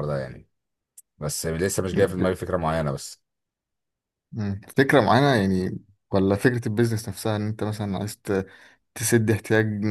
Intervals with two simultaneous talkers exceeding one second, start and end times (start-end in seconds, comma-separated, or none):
none